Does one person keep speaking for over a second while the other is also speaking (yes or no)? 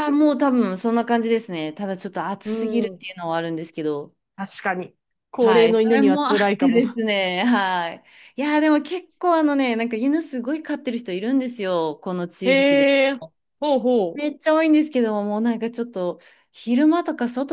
yes